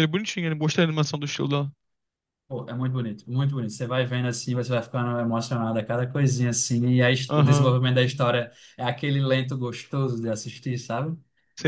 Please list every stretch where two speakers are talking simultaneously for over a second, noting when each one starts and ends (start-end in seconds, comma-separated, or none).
none